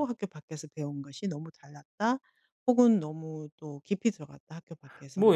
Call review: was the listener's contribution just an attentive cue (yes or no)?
no